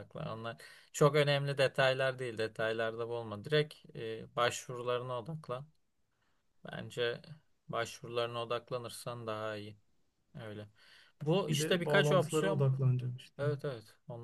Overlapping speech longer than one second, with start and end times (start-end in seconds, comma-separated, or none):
11.5-12.7